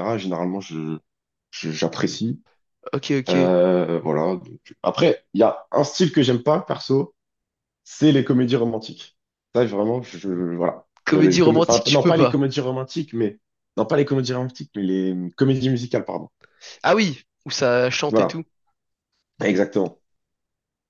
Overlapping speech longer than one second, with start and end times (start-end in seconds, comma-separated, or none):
11.1-12.4